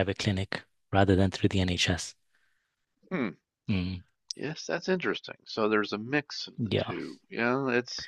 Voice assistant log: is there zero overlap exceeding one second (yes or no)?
yes